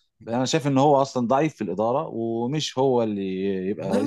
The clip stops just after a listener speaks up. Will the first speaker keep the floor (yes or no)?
no